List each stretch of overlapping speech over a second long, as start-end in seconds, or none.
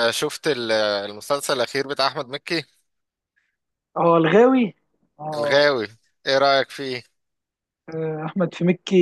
none